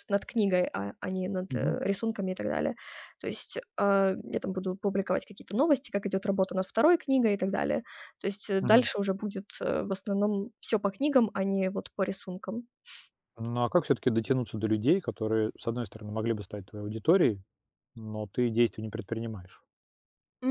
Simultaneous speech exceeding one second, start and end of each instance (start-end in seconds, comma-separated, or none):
none